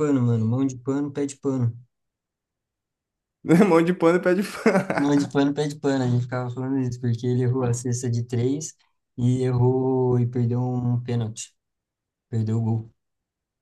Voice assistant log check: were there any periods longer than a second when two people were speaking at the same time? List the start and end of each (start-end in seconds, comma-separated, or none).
none